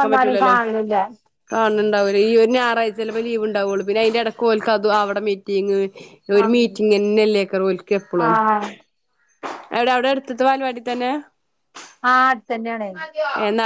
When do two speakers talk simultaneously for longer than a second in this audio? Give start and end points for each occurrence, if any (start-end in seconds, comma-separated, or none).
none